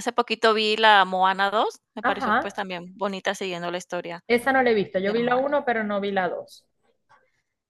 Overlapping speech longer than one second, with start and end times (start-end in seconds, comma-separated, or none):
none